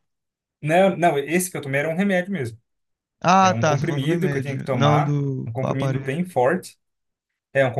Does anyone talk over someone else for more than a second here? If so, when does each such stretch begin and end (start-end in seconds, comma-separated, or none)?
3.4-6.2